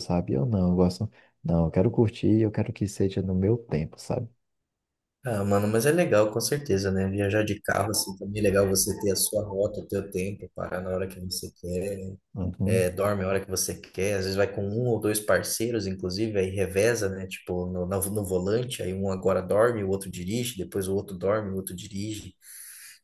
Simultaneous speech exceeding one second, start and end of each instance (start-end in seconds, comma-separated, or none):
none